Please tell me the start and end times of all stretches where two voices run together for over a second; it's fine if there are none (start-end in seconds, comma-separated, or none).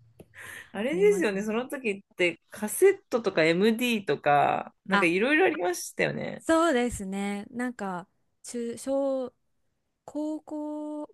none